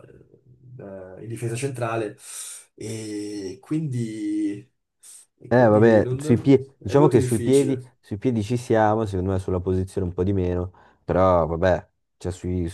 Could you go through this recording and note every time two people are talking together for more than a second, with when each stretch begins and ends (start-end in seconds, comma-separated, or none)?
5.5-7.8